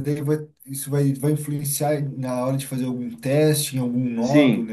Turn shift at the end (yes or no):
yes